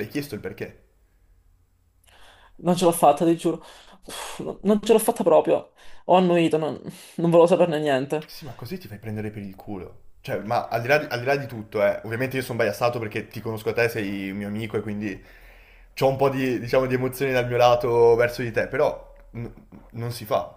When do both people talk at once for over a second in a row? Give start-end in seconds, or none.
none